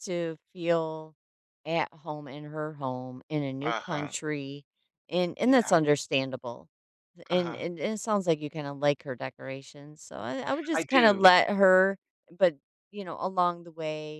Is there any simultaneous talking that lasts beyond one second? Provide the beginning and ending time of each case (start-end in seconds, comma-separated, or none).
none